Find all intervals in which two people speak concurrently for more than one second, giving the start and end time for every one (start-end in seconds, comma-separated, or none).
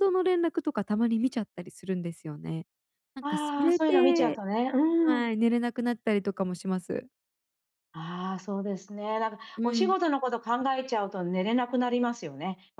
3.2-4.4